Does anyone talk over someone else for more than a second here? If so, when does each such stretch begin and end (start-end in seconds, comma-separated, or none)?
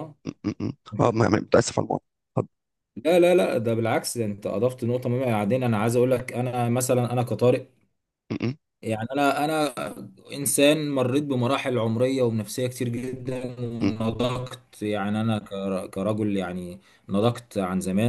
none